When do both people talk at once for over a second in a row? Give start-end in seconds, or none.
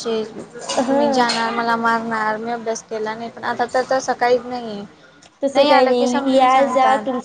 none